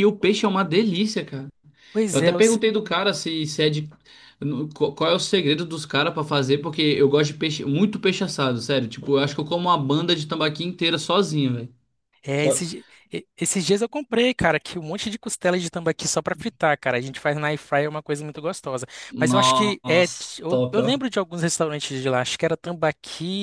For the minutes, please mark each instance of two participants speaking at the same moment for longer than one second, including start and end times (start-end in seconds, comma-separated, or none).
19.1-21.0